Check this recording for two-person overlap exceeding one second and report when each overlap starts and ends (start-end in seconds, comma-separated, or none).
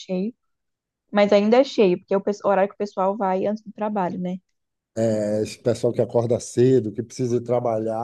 none